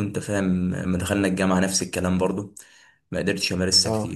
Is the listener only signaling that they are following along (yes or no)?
yes